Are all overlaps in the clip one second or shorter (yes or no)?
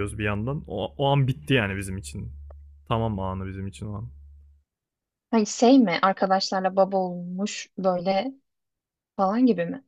yes